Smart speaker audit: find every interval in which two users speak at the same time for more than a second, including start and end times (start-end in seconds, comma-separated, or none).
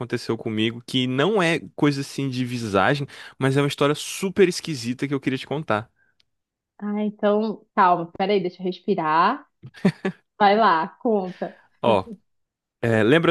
none